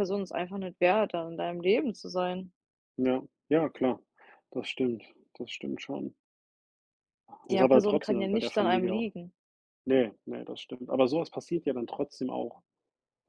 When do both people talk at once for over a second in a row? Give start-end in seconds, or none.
7.5-9.1